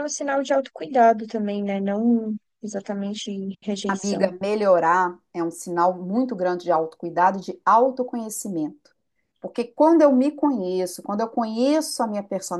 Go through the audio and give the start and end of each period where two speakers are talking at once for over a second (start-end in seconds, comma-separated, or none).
none